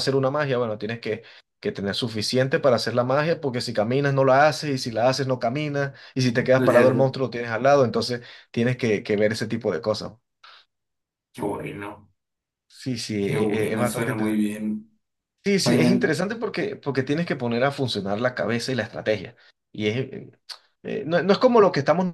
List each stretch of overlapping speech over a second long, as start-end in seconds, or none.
13.2-14.6